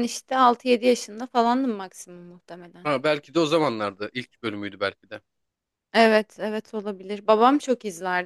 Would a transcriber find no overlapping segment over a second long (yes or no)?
yes